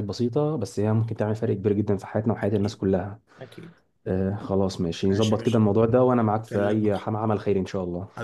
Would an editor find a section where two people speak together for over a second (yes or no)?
no